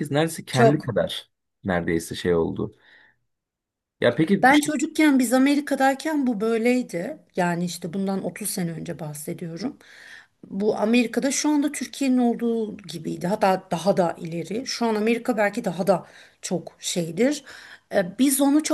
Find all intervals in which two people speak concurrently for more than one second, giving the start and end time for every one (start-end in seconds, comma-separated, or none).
none